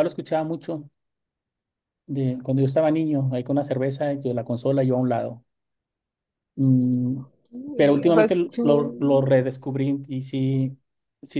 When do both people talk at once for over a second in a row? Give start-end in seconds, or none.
7.8-9.4